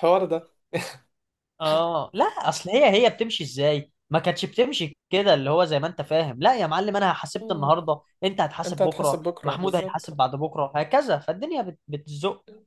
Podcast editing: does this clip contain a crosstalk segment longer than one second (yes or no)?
yes